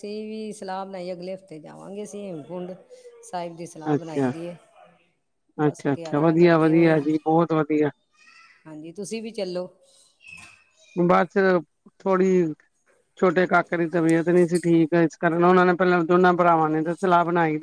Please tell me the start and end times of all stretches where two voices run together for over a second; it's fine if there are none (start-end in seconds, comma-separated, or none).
5.7-7.0